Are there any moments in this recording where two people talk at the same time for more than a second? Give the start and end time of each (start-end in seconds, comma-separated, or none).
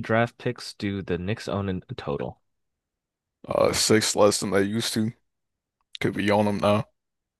none